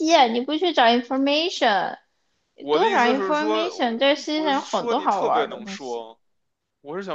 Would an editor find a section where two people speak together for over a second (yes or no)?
yes